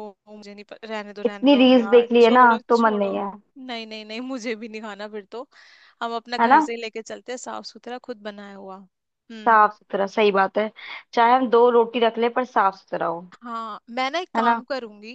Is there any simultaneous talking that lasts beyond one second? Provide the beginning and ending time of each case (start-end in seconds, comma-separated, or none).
1.2-3.1